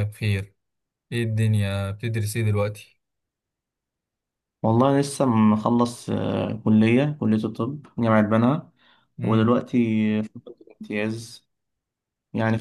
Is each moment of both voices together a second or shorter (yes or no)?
yes